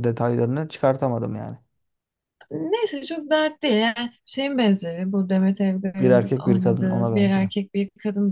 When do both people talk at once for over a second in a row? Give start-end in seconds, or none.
6.0-7.5